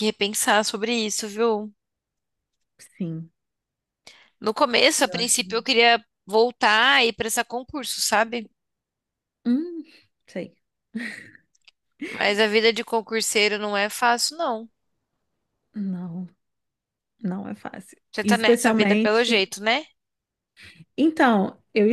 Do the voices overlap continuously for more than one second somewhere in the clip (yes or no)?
yes